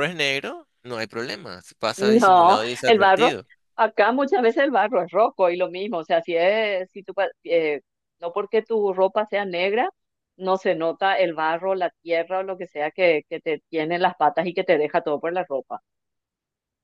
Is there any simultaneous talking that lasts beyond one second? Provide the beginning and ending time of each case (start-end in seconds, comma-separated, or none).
2.0-3.4